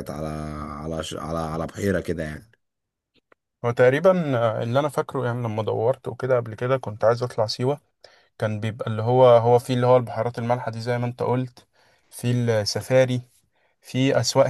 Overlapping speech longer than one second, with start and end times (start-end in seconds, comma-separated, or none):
none